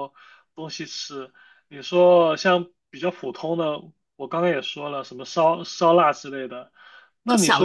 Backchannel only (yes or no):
no